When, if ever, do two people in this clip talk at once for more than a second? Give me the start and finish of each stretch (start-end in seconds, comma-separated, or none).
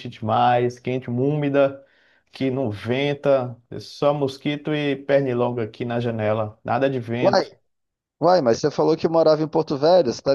none